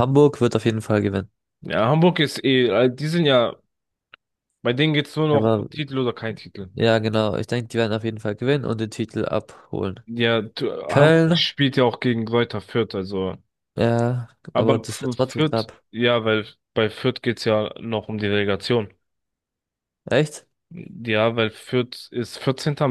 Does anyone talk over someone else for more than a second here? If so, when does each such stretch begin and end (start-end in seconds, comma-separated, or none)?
14.5-15.8